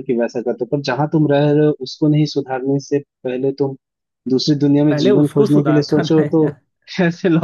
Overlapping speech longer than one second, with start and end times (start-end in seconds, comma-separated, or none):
4.9-6.5